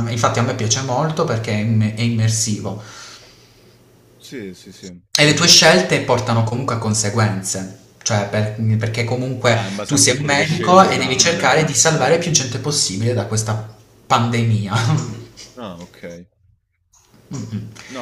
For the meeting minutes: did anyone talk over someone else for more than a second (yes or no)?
yes